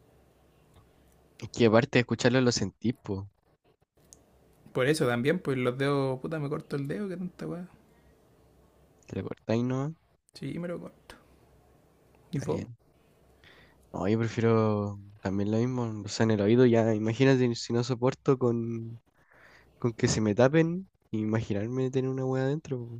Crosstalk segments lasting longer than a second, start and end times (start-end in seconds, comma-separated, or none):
none